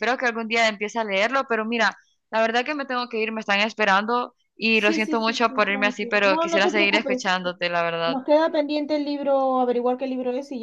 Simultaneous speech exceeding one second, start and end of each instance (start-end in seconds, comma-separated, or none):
4.7-7.3